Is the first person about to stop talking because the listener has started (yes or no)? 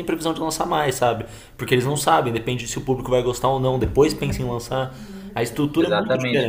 yes